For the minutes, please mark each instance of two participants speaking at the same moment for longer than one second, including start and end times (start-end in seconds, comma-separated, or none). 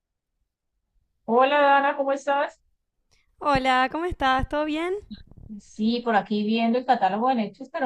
none